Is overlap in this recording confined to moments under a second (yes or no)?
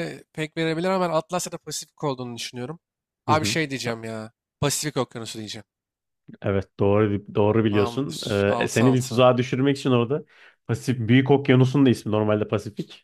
no